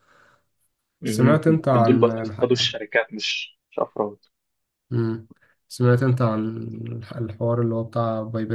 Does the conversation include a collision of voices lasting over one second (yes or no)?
yes